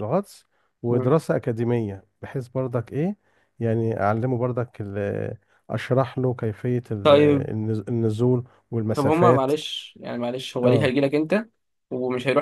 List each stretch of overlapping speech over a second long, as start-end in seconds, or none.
none